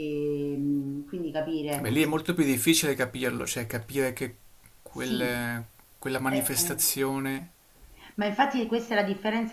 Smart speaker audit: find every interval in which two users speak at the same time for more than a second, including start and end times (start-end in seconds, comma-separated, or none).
none